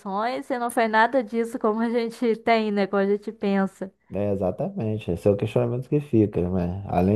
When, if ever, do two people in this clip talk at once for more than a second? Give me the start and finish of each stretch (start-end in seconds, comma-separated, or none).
none